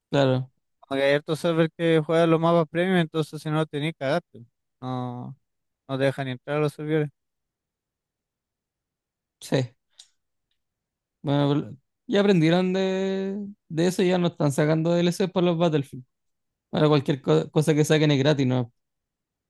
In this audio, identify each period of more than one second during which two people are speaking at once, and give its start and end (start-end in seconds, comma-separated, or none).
none